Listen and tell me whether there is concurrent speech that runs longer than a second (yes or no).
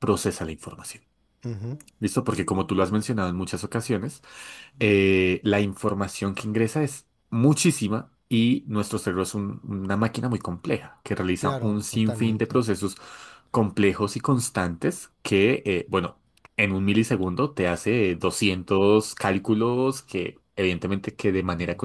yes